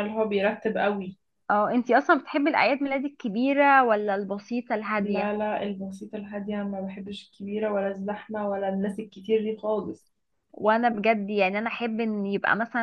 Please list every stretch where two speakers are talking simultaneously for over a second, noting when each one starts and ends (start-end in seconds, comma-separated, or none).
none